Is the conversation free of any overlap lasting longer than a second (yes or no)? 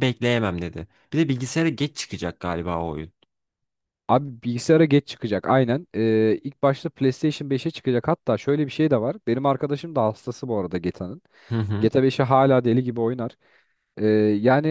yes